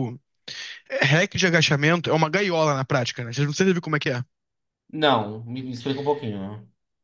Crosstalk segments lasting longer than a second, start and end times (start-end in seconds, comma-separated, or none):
none